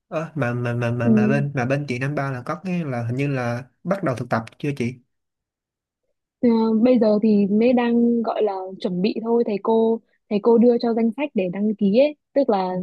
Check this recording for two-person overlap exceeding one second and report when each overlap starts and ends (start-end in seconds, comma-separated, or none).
none